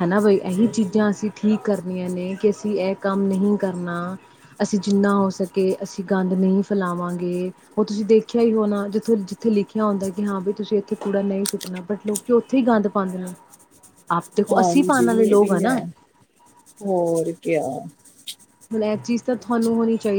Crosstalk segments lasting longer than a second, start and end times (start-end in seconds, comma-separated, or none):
14.5-15.8